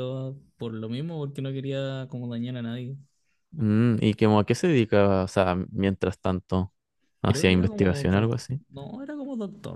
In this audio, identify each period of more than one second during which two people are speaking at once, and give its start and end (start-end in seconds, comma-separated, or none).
7.3-8.6